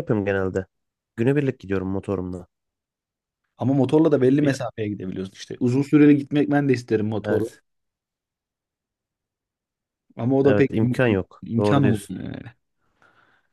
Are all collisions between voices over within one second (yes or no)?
no